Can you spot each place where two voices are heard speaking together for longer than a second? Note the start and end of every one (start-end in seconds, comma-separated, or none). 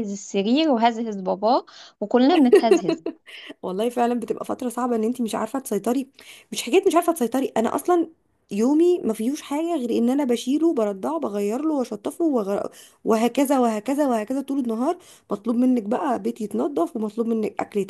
none